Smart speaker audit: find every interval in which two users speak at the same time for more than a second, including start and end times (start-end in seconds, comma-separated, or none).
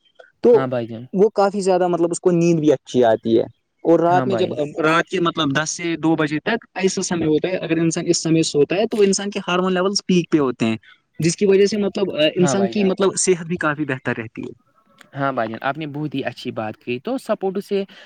none